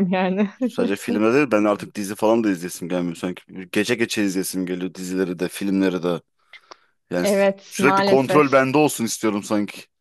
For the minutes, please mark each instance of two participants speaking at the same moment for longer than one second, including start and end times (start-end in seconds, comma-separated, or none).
7.2-8.7